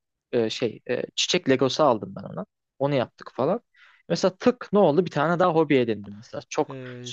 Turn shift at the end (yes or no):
no